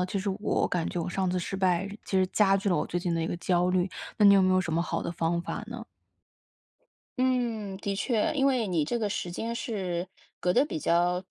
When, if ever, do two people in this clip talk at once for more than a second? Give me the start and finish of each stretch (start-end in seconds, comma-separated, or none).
none